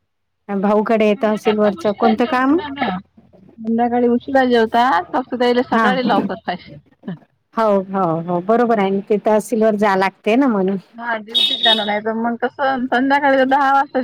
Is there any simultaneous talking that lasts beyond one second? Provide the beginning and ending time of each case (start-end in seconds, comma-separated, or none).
1.1-2.6